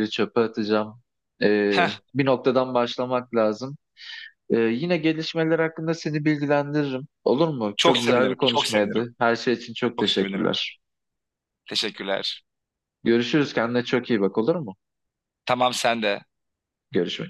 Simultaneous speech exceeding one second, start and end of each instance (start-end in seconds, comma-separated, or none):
7.8-9.0